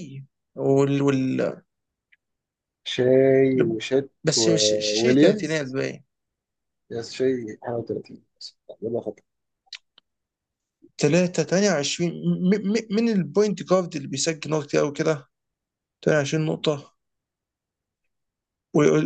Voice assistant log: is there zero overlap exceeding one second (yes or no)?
no